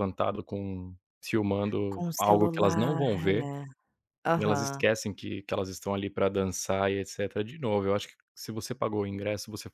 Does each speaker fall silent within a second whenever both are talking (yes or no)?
no